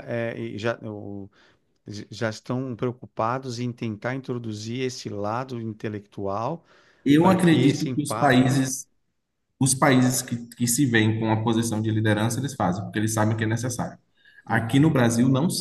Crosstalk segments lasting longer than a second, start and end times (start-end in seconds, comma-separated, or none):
7.2-8.7